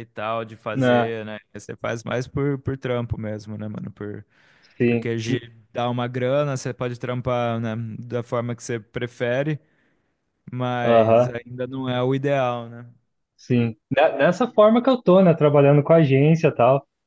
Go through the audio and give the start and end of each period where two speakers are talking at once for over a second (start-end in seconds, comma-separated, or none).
none